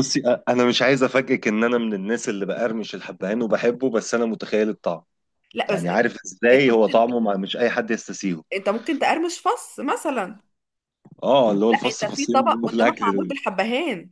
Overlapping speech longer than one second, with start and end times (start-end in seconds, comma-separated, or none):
11.7-13.3